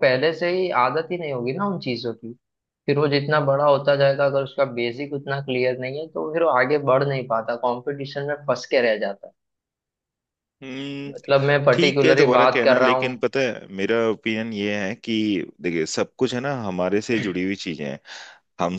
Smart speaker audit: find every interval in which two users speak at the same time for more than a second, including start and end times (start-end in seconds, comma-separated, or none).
11.7-13.2